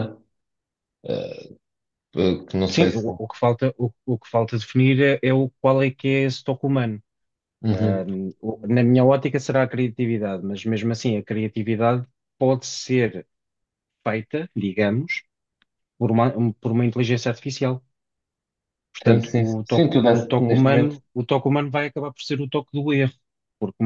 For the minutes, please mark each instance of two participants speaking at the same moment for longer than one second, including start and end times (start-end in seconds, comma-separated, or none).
19.1-21.0